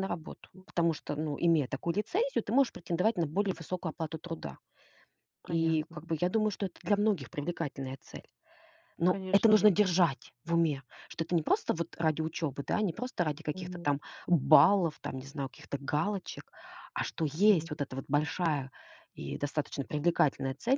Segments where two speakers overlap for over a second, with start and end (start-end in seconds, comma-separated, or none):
none